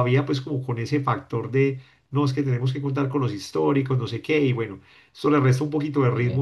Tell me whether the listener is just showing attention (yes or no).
yes